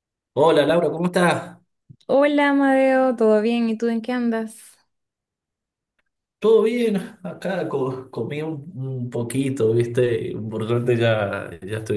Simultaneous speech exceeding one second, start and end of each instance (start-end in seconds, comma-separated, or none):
none